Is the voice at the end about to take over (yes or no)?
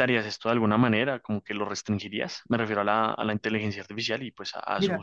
yes